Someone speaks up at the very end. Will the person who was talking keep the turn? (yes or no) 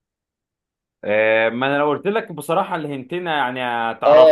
no